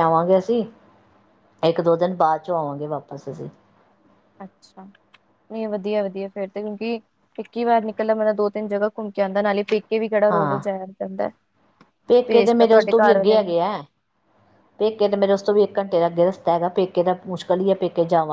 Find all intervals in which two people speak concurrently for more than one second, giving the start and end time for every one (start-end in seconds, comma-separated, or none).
12.3-13.5